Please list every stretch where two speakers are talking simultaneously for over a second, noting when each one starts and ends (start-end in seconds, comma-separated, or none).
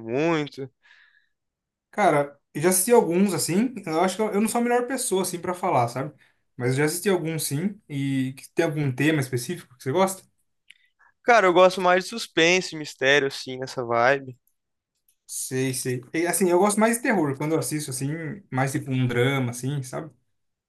none